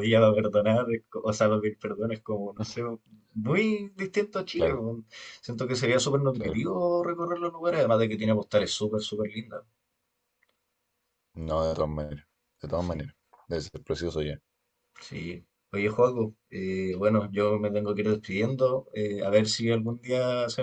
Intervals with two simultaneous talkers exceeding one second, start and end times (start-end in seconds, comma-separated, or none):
none